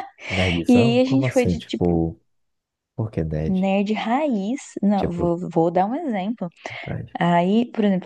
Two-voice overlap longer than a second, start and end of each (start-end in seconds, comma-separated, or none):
0.7-2.0